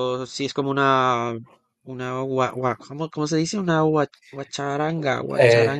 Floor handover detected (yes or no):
yes